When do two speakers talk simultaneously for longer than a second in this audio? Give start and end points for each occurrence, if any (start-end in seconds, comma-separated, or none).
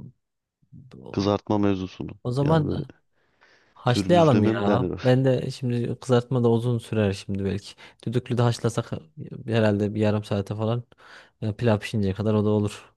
3.9-5.1